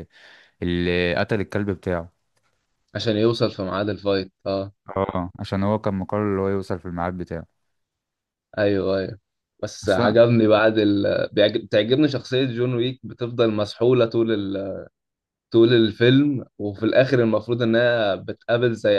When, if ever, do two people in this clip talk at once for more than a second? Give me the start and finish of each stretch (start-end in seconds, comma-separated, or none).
none